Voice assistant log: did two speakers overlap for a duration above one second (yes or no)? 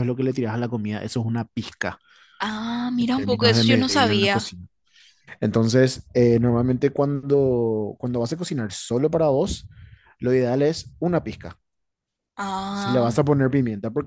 yes